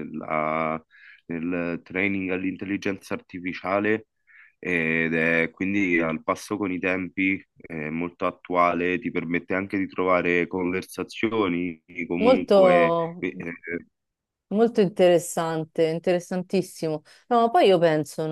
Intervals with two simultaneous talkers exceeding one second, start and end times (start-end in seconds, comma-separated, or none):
none